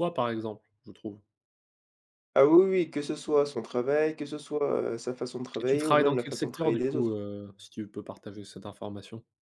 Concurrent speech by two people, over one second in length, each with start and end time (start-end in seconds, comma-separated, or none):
5.6-7.2